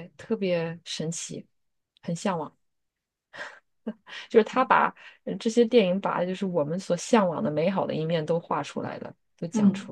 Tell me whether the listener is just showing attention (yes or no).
no